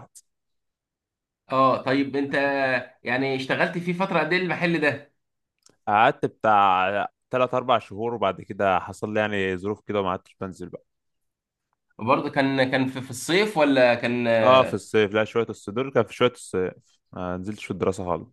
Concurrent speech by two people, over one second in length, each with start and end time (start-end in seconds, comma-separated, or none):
none